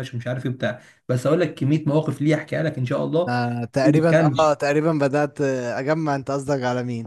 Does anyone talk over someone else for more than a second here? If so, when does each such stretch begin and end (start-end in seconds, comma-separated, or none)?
none